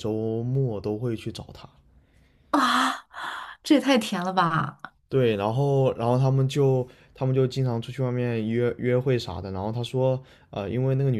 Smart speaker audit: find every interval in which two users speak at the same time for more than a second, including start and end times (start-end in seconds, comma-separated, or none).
none